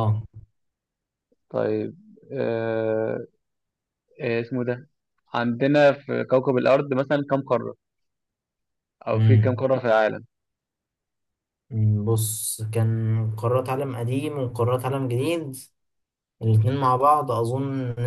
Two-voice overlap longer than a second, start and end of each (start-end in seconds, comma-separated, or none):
none